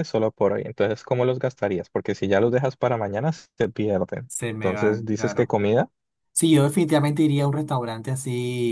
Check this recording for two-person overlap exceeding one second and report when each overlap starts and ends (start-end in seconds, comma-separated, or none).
4.3-5.6